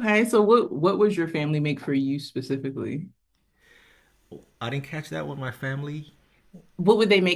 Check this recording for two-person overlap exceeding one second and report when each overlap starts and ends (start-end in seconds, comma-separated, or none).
none